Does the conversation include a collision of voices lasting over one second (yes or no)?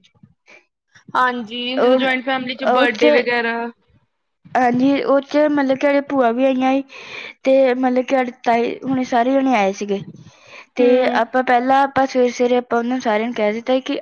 yes